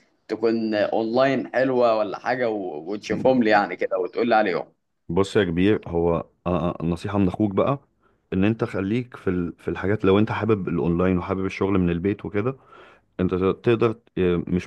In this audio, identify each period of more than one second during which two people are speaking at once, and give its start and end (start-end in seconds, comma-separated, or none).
none